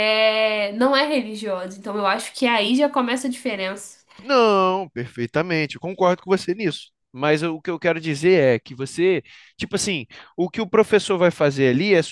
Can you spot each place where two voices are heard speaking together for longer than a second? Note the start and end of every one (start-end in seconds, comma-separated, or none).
none